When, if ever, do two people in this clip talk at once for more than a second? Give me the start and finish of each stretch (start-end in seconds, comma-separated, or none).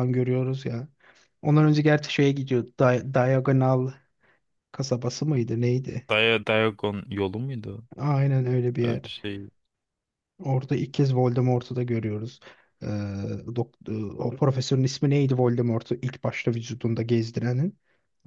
none